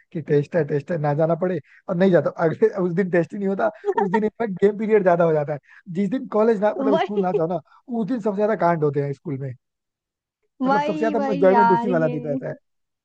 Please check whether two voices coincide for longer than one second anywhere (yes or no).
yes